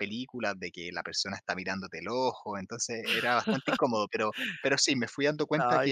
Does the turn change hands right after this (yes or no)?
no